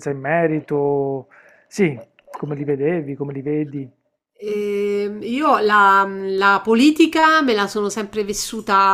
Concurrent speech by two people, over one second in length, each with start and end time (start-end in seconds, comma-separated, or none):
none